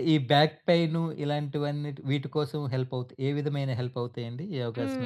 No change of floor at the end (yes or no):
no